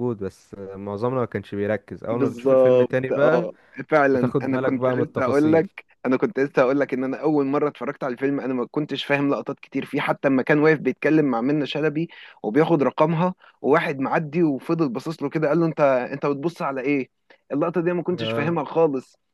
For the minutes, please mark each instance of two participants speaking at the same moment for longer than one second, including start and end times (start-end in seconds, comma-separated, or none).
2.1-3.5, 4.1-5.7